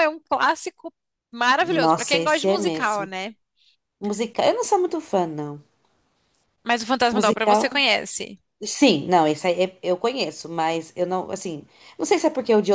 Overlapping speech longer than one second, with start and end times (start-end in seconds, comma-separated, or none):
1.6-3.1